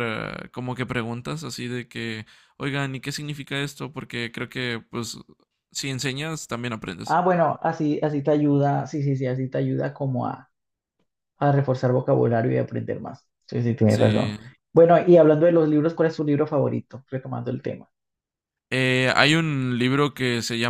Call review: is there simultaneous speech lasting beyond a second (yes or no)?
no